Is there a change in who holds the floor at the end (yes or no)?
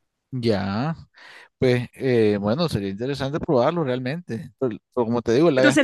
yes